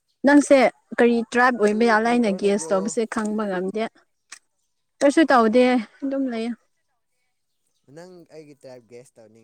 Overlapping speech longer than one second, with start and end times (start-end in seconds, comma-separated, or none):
1.6-3.0